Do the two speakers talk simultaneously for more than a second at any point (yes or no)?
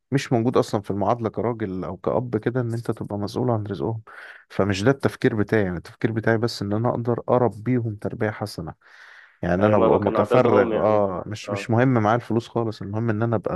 yes